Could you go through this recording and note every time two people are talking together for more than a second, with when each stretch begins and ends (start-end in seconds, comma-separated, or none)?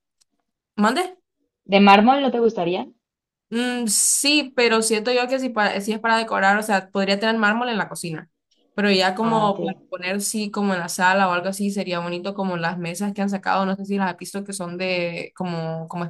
none